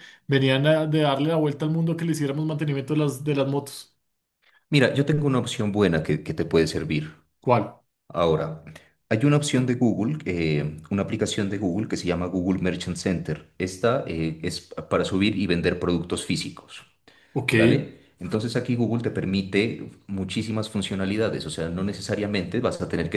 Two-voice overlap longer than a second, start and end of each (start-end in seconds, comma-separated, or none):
none